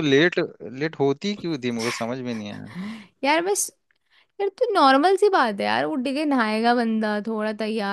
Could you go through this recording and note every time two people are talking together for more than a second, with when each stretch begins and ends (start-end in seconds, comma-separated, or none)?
none